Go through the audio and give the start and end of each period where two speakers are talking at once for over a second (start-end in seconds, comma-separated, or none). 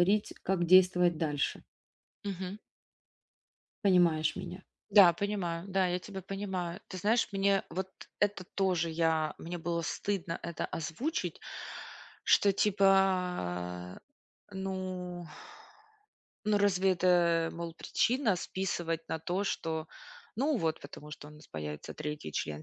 none